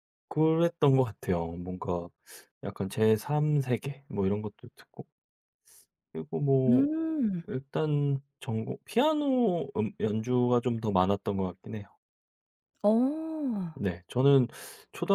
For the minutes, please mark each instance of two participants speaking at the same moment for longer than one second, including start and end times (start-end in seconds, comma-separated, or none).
none